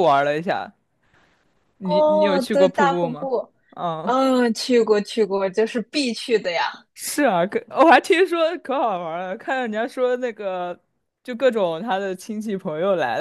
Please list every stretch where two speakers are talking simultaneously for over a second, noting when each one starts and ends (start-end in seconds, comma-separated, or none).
1.8-3.3